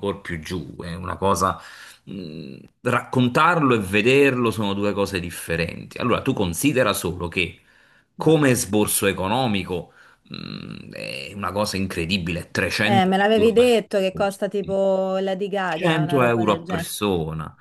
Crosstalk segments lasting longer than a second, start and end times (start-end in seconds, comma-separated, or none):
12.8-14.8, 15.6-16.9